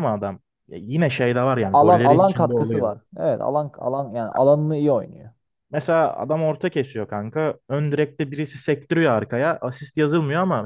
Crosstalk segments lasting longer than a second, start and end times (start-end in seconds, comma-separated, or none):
1.6-2.9